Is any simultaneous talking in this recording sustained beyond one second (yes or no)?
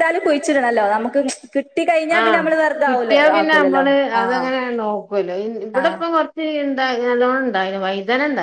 no